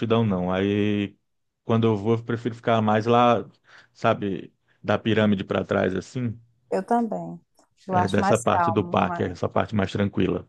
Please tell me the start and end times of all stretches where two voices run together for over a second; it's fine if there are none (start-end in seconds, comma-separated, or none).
7.9-9.4